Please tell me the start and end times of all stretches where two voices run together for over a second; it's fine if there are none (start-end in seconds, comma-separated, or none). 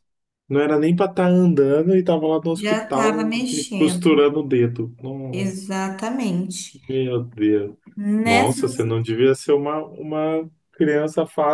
2.6-4.2